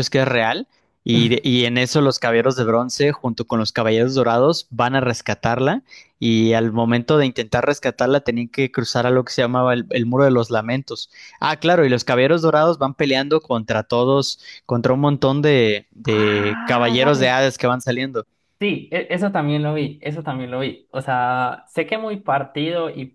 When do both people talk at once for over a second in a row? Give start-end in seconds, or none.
16.0-17.4